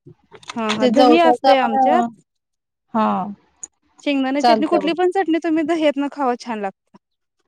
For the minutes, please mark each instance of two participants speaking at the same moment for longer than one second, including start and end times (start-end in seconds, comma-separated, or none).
0.8-2.1